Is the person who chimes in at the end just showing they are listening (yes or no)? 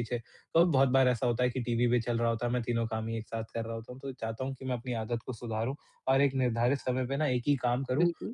yes